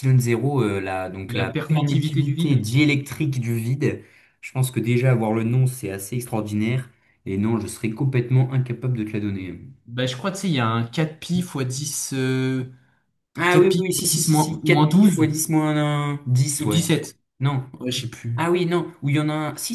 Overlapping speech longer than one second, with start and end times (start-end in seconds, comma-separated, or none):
1.3-2.6, 13.5-15.2